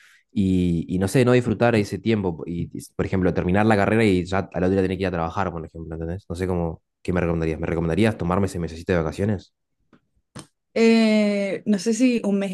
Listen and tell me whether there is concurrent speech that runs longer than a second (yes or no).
no